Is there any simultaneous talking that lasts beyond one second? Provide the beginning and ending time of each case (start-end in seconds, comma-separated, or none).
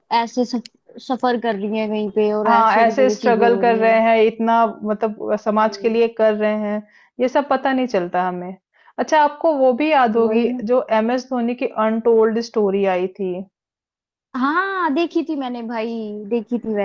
2.5-4.0